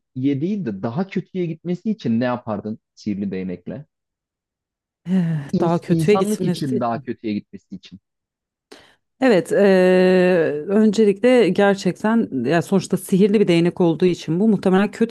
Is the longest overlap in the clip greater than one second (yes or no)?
yes